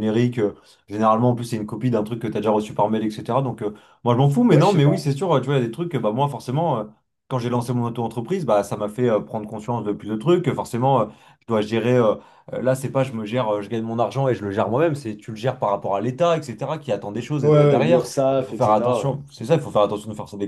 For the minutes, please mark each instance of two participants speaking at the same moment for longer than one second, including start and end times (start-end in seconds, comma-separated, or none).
17.4-19.2